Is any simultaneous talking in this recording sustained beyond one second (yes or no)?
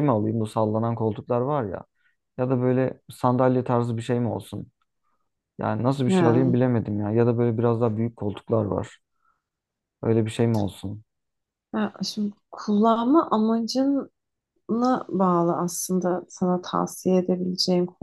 no